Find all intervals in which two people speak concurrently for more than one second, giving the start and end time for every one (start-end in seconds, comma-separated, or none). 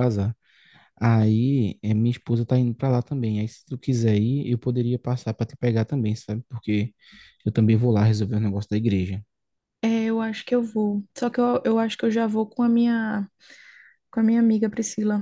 none